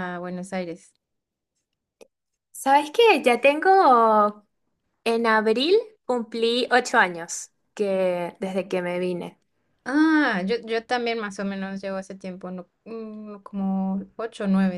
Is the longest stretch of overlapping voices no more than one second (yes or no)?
yes